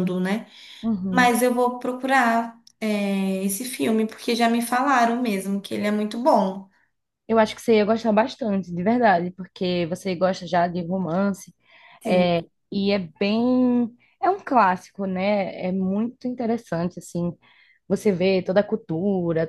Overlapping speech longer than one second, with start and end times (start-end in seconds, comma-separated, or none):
none